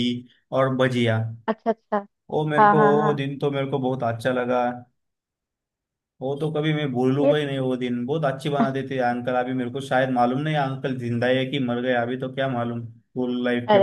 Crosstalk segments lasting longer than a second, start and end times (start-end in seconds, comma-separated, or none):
none